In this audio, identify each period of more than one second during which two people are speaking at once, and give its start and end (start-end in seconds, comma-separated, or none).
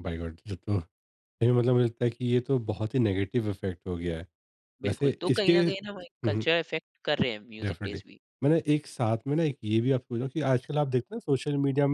4.8-6.5